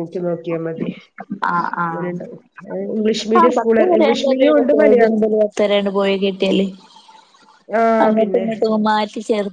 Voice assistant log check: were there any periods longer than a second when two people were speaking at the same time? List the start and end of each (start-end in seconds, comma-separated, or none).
3.4-5.2